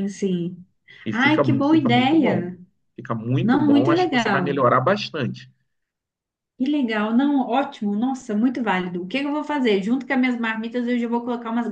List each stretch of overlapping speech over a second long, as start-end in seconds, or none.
1.1-2.5, 3.4-4.7